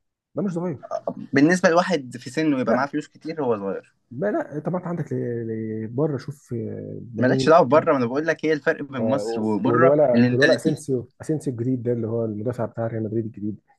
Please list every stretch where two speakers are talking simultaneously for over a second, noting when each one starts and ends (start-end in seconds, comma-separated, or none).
9.0-10.8